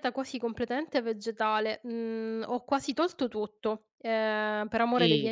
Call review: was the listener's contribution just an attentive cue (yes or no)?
no